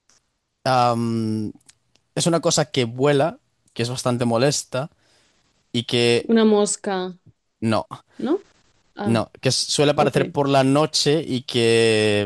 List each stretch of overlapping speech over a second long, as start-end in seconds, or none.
none